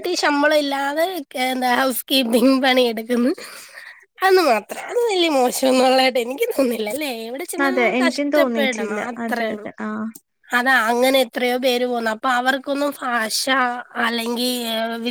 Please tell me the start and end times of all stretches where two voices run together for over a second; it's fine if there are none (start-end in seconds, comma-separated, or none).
7.7-9.7